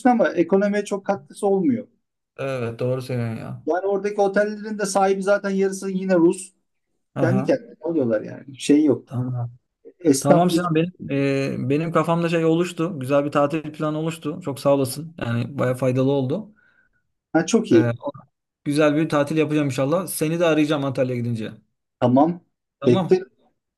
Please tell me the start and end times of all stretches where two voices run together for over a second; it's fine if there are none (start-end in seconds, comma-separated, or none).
none